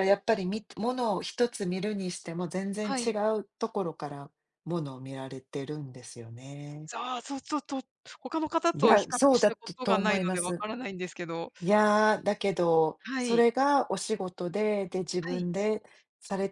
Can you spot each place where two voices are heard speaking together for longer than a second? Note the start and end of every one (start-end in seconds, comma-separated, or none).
8.7-10.7